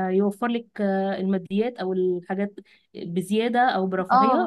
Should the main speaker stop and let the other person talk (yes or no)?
yes